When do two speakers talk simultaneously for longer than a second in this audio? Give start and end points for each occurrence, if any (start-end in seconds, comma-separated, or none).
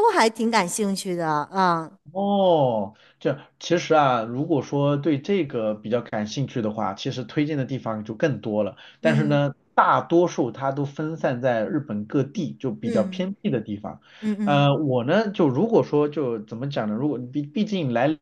none